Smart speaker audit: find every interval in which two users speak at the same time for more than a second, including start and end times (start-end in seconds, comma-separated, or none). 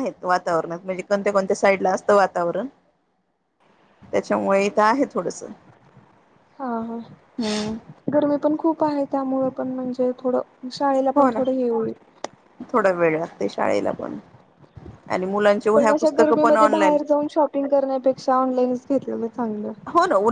15.7-17.0